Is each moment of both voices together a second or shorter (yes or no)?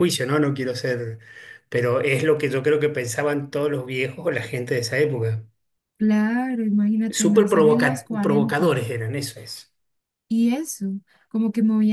no